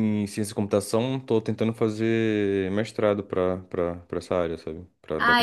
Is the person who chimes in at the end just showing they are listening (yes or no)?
no